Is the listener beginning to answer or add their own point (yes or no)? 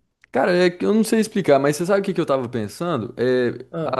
no